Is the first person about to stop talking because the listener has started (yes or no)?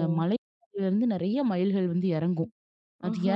no